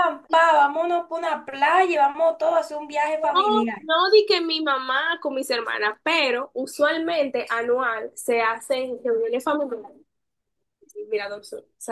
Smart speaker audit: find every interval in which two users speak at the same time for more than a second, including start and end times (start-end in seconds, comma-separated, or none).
none